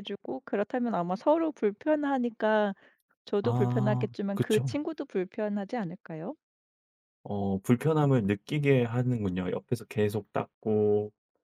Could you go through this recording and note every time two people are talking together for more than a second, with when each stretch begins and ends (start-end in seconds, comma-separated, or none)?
3.4-4.8